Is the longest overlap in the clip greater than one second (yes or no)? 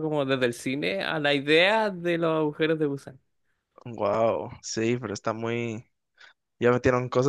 no